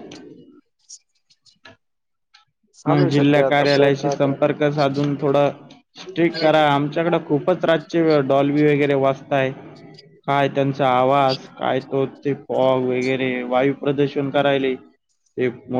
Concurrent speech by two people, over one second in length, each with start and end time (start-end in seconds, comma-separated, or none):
2.9-4.5